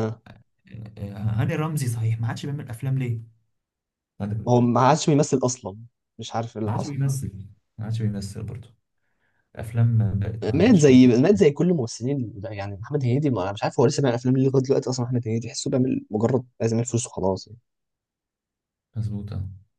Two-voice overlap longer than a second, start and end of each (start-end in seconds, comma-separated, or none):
none